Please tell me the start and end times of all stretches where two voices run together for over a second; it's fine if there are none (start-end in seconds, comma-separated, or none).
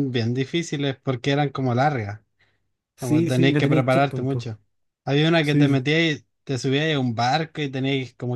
3.0-4.5